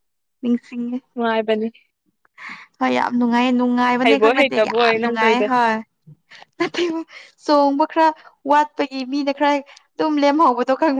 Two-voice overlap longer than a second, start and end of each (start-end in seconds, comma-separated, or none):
4.0-5.4